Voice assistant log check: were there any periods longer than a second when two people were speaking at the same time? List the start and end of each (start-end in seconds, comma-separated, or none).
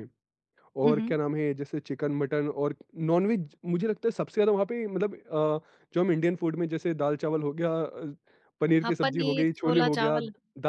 8.8-10.2